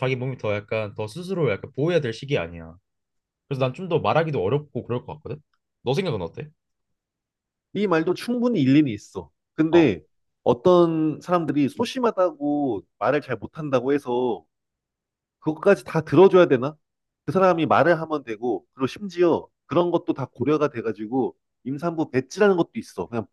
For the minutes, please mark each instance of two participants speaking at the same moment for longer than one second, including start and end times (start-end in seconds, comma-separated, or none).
none